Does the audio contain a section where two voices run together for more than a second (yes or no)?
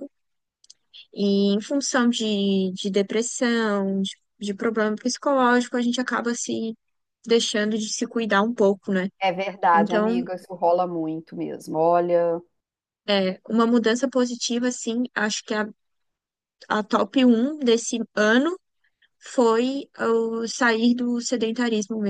no